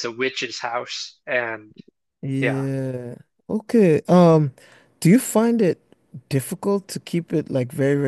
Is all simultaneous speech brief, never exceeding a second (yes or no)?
yes